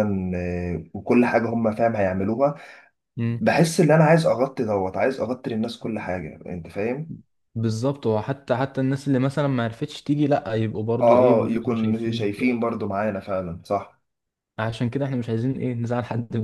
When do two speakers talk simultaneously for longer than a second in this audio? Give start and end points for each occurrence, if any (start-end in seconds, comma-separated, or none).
11.0-12.6